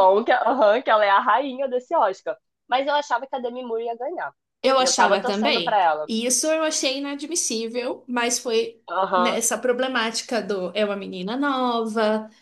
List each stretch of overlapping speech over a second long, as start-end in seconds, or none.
4.8-6.1